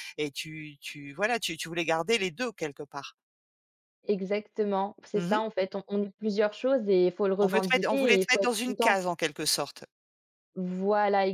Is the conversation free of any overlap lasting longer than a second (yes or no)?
no